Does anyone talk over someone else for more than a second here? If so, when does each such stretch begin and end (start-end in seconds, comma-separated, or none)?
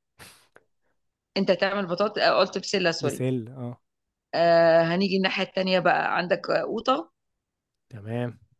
none